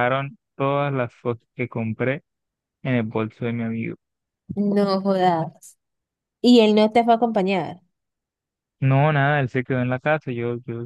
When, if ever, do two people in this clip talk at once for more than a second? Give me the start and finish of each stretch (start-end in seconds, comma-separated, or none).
none